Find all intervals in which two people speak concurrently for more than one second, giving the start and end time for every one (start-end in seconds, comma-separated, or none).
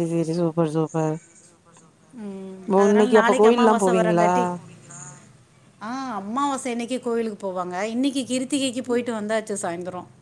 2.8-4.3